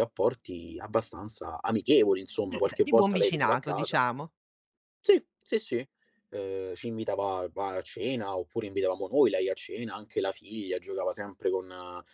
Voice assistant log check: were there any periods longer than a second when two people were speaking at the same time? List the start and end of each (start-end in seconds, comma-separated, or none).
2.5-4.0